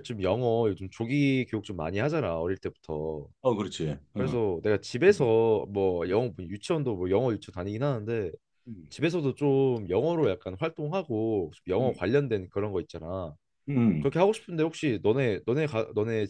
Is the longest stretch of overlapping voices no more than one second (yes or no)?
yes